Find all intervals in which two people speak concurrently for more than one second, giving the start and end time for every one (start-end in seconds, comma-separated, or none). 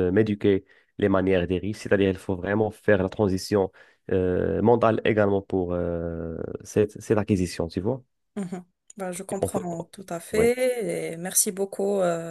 none